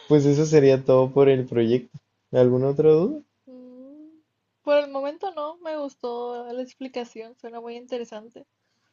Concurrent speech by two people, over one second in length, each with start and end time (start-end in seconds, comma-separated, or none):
none